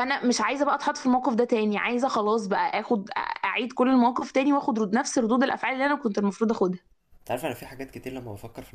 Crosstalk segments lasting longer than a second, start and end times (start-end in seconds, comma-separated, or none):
none